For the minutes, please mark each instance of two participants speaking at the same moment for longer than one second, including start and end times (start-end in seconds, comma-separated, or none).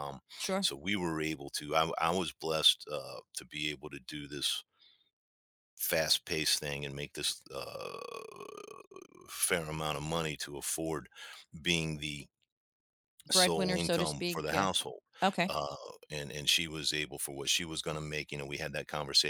13.3-14.7